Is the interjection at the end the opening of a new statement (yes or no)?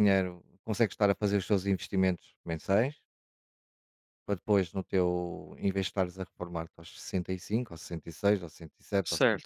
no